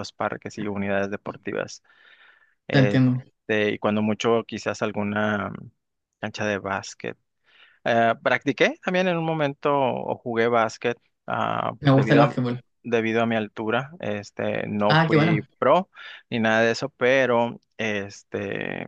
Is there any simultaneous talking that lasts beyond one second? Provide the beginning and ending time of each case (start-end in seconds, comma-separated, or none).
none